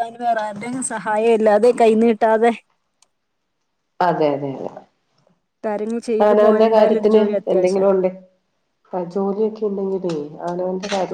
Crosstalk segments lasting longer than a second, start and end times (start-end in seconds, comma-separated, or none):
6.2-7.9